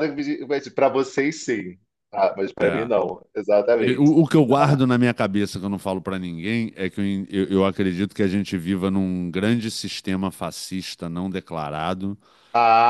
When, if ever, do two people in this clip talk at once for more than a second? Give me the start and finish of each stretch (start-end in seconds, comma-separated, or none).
none